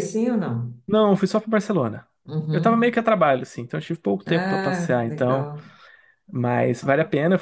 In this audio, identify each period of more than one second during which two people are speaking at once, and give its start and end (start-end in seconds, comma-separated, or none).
4.2-5.5